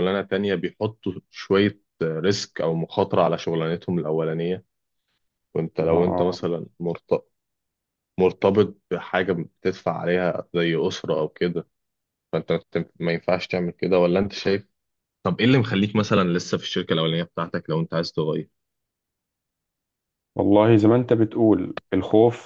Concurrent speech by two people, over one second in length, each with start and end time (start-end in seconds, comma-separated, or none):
none